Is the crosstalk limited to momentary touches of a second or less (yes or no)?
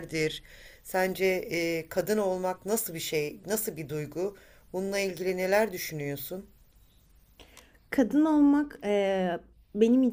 yes